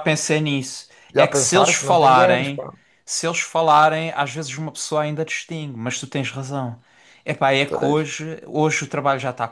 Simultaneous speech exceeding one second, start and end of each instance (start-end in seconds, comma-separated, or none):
1.1-2.7